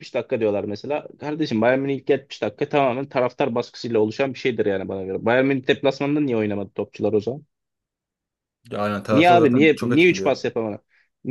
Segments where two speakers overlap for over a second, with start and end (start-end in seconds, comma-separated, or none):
9.1-10.4